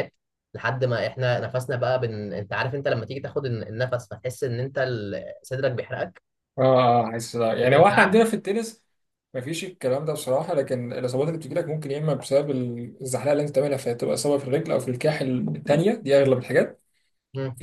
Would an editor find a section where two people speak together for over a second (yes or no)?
no